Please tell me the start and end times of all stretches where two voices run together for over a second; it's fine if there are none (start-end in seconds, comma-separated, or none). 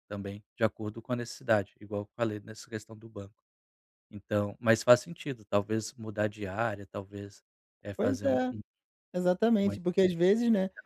none